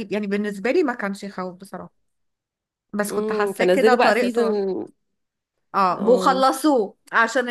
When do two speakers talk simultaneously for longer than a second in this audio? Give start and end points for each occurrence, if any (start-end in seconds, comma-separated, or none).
3.1-4.6